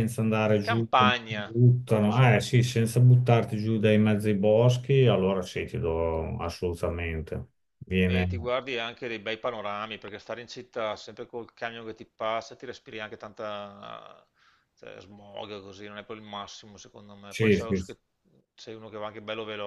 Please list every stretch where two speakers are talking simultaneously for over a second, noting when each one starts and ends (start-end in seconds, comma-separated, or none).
0.6-2.4